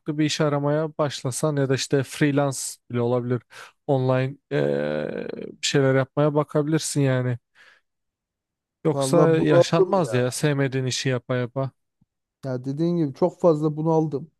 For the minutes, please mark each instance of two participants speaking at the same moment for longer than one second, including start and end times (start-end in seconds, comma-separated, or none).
8.9-10.2